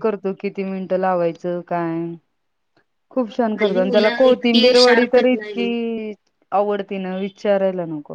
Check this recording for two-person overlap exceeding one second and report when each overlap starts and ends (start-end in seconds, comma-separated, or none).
3.6-5.7